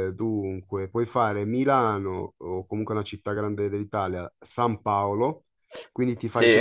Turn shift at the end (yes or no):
no